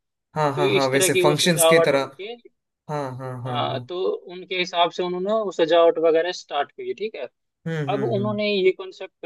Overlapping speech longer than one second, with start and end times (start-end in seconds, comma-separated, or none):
0.6-2.1